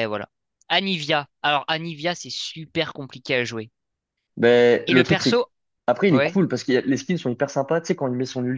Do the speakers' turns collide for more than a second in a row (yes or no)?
no